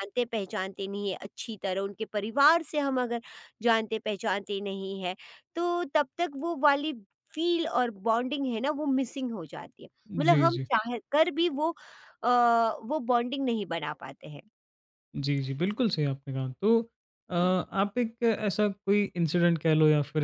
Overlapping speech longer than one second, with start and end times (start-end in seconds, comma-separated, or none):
none